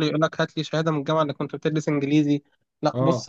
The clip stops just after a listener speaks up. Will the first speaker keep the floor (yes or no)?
yes